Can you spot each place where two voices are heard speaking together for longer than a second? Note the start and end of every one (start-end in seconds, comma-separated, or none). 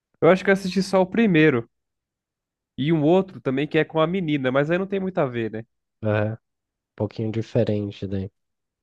none